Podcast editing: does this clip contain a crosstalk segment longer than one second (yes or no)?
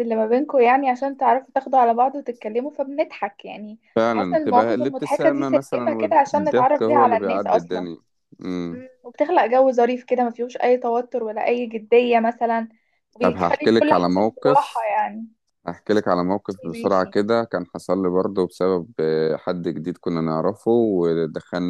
yes